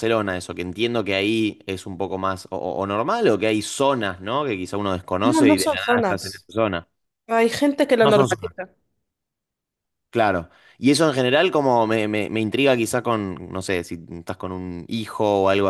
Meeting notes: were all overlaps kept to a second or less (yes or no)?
no